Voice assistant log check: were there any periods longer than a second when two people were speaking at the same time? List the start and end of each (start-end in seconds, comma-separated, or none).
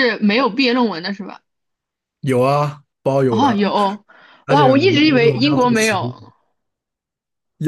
4.5-6.1